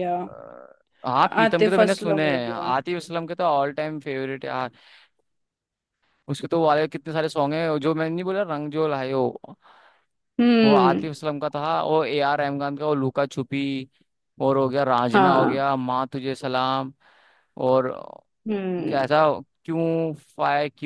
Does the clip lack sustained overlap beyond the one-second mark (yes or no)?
no